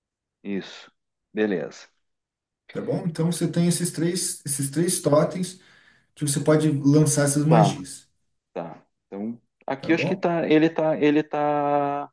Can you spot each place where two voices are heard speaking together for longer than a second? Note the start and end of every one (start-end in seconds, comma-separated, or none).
none